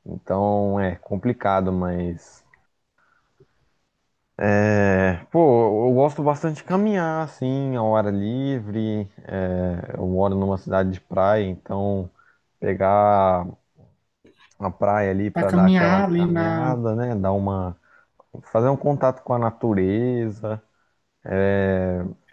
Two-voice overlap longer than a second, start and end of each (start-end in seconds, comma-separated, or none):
15.3-16.8